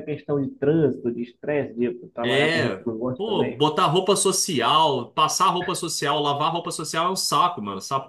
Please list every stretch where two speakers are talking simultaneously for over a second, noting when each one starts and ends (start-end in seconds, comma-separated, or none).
2.2-3.6